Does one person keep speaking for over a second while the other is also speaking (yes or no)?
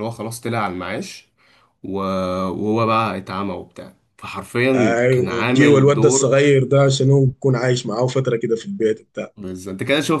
yes